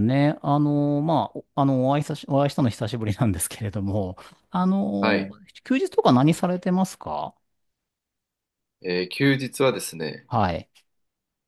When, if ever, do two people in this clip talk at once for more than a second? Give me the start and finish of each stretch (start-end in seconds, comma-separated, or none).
none